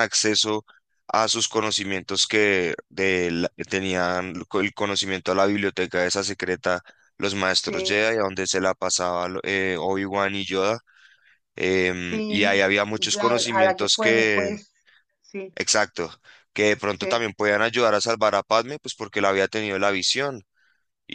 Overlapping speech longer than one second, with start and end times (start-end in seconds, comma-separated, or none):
12.0-14.5